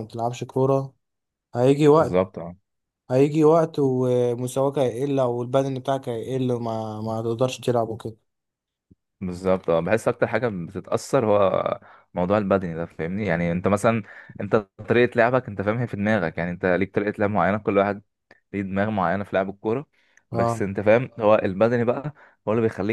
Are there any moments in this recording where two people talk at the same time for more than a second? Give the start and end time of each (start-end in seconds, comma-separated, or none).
none